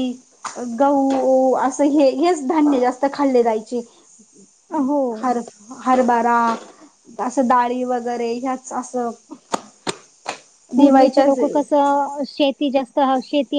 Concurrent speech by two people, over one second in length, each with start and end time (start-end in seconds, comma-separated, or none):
none